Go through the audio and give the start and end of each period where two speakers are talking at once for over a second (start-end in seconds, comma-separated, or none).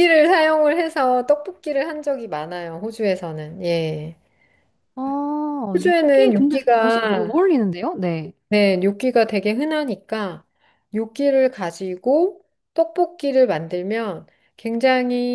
5.7-7.4